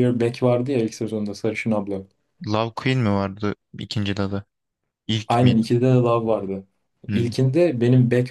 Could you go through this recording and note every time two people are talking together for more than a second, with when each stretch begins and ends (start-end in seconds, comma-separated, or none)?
none